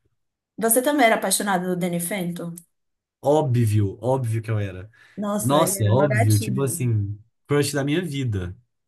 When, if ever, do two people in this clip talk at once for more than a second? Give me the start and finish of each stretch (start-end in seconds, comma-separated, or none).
5.4-6.9